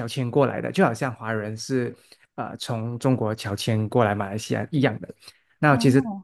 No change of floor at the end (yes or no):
yes